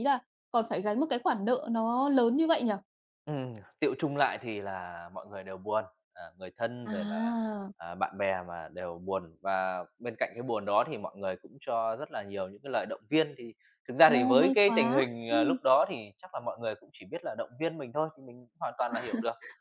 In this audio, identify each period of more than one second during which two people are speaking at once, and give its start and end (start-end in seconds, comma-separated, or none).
14.1-15.6